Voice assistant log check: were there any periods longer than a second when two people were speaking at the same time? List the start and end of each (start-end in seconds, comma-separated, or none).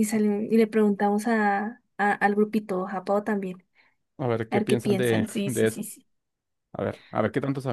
4.5-5.9